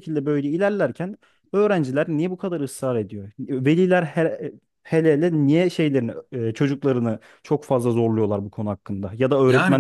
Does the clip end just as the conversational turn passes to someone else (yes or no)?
yes